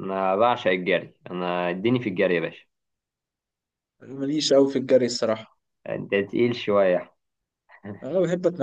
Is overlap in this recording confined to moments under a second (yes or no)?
yes